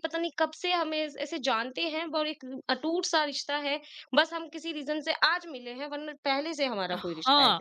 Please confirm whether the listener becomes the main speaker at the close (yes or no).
yes